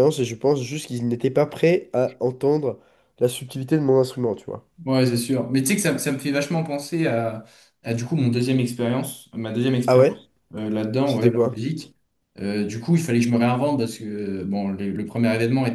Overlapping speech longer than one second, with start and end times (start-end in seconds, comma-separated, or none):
none